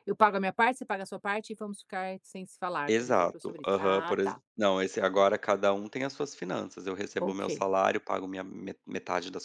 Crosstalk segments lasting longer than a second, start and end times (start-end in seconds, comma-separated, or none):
2.9-4.4